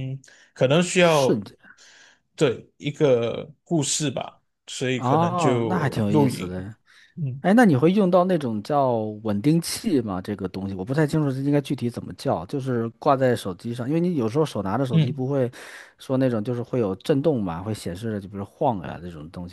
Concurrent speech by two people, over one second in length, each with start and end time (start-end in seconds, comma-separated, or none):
4.9-6.7